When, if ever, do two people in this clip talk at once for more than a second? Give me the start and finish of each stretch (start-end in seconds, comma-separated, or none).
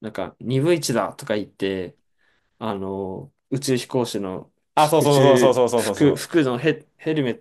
4.8-6.4